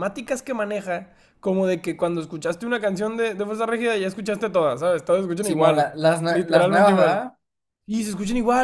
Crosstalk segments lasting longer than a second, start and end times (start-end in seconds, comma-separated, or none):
5.4-7.2